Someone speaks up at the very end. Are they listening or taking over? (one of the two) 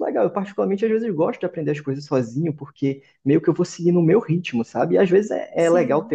listening